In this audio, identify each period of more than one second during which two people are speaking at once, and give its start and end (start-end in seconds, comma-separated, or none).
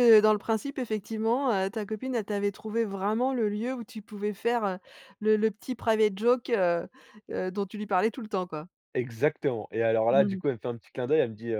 none